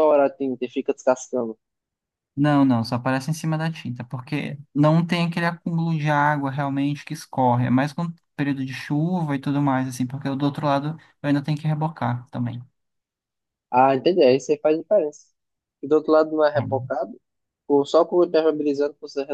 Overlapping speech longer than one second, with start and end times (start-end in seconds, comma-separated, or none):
none